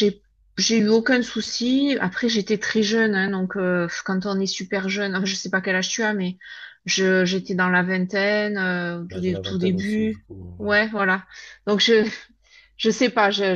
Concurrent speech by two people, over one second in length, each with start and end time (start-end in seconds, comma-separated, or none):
9.1-10.8